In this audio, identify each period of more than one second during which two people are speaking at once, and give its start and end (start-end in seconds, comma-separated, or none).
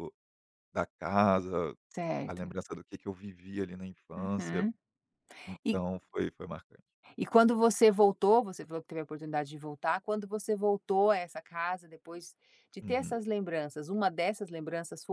none